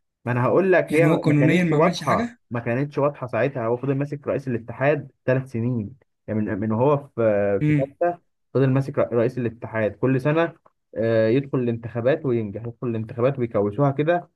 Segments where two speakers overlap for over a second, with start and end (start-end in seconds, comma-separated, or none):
0.9-2.4